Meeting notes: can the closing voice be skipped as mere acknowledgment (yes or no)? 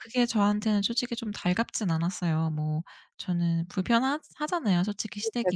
no